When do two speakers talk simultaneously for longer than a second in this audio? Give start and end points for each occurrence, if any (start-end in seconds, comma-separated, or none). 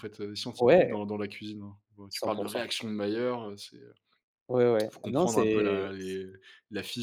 4.9-6.2